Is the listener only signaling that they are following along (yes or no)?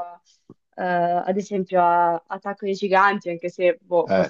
no